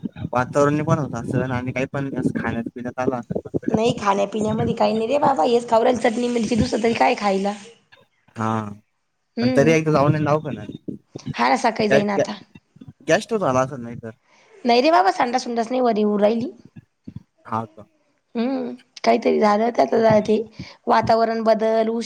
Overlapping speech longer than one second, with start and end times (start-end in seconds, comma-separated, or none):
none